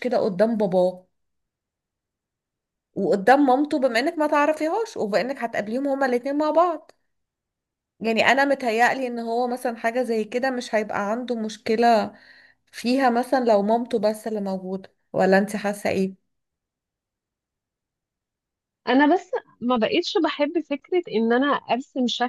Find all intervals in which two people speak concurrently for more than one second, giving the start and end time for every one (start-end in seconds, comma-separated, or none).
none